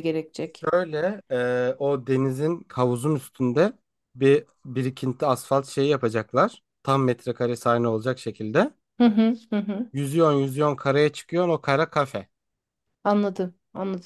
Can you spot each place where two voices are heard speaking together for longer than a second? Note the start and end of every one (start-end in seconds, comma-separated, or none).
none